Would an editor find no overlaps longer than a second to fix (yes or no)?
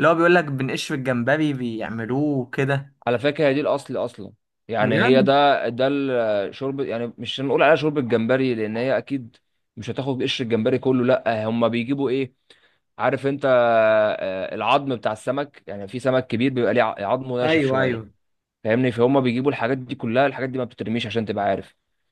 yes